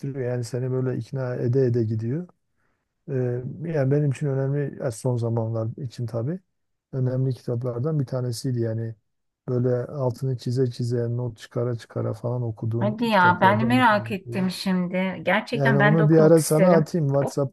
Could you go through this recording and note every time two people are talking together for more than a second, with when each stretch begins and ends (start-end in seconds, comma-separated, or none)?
12.8-14.5, 15.5-16.9